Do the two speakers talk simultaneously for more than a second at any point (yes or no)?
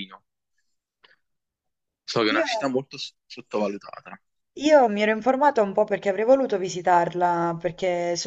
no